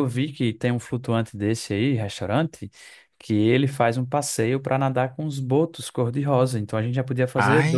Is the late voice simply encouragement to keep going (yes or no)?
no